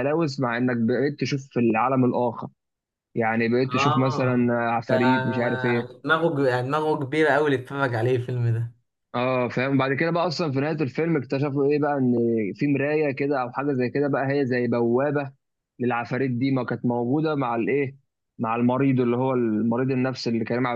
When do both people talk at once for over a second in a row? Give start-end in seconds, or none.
3.7-5.9